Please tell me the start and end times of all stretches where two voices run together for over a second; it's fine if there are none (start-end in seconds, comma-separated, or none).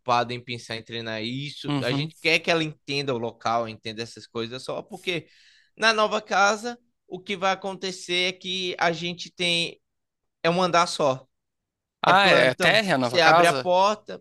12.1-13.7